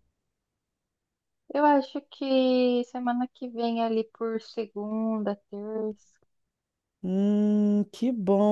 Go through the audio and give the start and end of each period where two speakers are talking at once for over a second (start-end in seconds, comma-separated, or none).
none